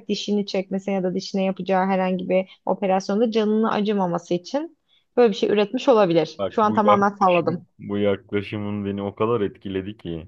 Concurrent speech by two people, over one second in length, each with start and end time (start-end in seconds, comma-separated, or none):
6.4-7.7